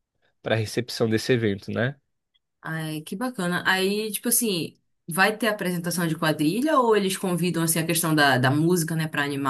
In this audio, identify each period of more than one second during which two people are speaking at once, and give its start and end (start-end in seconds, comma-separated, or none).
none